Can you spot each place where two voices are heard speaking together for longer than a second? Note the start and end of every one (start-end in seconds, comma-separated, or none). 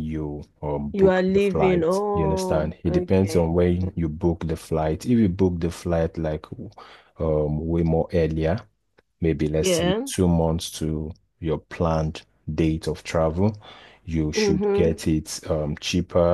0.9-3.9